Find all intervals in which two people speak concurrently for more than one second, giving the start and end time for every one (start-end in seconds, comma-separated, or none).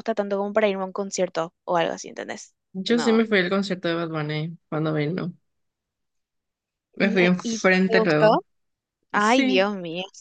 7.0-8.3